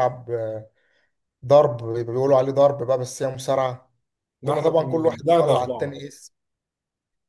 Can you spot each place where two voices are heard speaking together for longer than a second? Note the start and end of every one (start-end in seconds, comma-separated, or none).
4.4-6.0